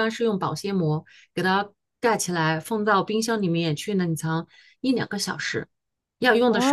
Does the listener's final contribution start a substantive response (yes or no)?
yes